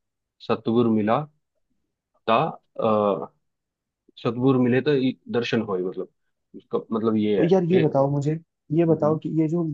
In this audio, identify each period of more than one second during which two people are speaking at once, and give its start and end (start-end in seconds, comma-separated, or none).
none